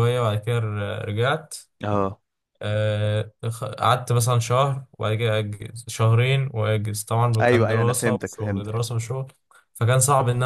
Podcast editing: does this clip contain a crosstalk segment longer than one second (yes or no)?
yes